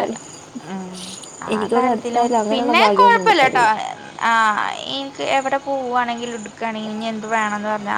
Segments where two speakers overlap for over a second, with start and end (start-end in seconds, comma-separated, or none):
1.5-3.6